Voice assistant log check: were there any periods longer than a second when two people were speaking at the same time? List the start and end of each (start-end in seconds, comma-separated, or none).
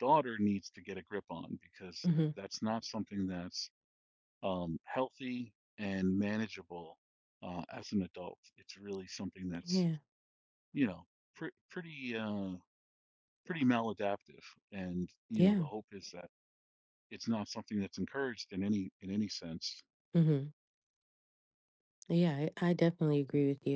none